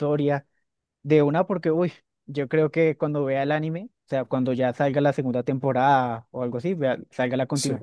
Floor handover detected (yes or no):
no